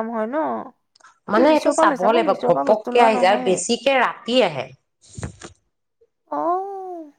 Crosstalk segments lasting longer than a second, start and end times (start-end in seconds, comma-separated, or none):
1.3-3.5